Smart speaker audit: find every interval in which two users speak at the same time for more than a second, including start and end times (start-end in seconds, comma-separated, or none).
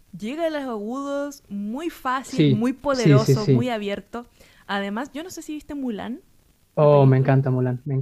2.3-3.7